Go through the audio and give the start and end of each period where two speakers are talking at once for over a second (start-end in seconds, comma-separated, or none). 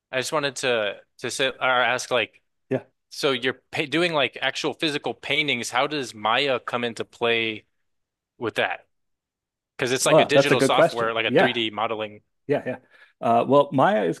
10.0-11.5